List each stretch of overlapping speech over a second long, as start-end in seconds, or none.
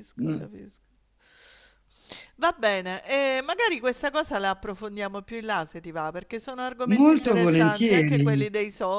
6.9-8.5